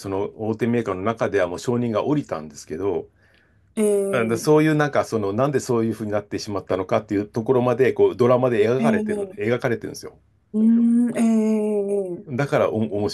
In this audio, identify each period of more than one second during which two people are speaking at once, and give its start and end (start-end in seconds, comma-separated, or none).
none